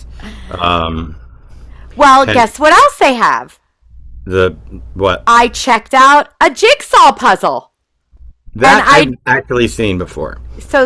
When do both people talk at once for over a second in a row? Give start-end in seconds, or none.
none